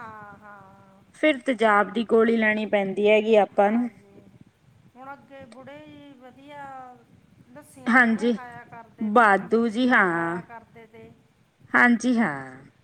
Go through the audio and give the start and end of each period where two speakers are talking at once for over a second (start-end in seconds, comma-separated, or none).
9.2-10.4